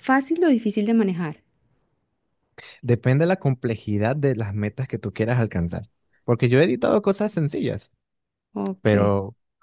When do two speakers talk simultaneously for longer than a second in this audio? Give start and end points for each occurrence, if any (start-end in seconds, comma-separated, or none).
none